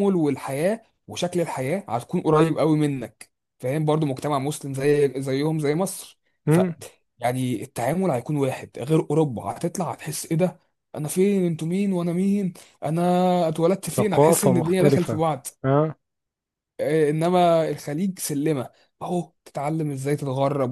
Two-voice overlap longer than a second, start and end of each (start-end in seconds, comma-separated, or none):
14.0-15.2